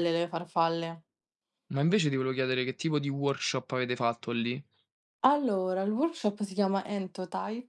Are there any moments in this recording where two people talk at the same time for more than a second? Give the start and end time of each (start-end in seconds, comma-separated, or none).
none